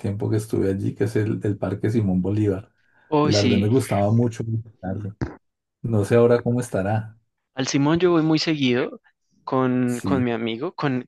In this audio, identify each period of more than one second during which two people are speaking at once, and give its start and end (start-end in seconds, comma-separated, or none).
none